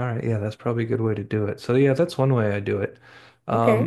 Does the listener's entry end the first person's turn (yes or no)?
no